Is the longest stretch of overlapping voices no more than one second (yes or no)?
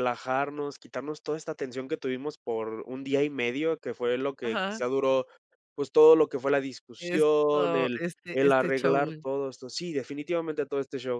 no